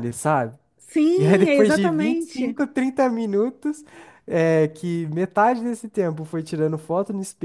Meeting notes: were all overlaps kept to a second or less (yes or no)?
no